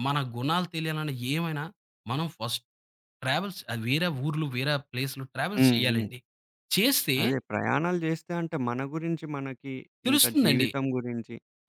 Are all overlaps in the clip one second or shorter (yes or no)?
yes